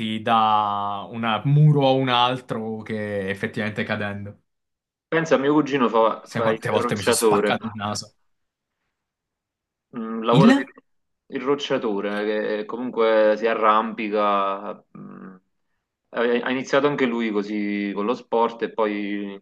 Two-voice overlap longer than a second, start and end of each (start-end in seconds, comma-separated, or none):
6.2-7.5